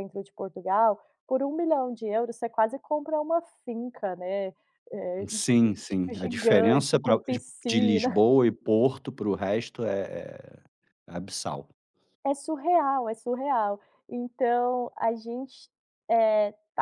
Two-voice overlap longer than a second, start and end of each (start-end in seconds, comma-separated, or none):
5.9-8.2